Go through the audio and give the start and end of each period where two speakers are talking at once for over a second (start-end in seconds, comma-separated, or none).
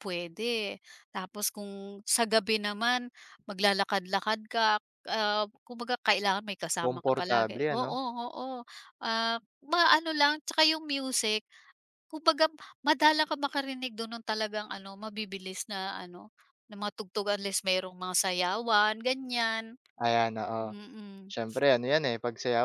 6.8-8.0